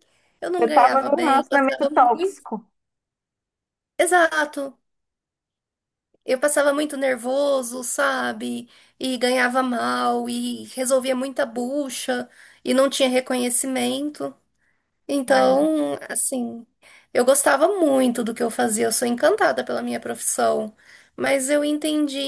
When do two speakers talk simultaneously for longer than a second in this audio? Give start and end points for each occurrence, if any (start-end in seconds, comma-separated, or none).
0.6-2.5